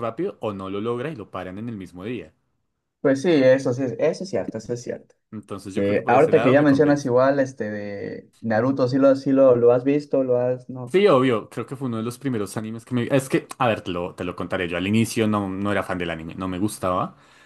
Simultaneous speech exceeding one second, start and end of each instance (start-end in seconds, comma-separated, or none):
5.7-7.2